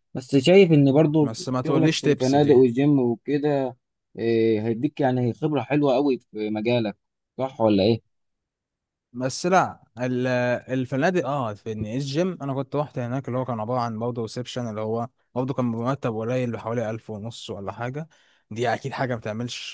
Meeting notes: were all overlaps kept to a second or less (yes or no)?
no